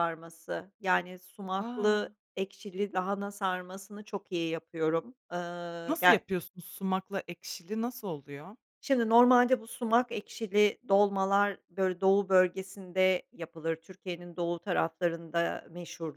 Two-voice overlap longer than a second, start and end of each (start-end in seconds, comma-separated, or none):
none